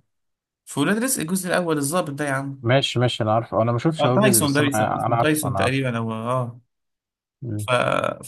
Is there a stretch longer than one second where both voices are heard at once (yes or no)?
yes